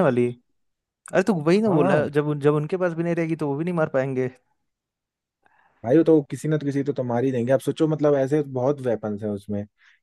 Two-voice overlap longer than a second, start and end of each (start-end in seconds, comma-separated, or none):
none